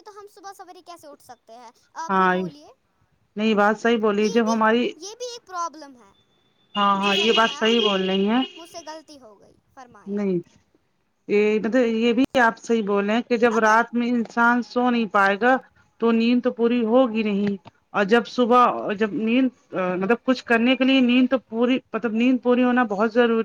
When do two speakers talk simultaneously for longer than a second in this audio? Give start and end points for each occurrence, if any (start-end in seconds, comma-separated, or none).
7.0-8.4